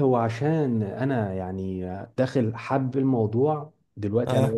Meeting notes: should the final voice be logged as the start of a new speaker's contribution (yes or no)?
no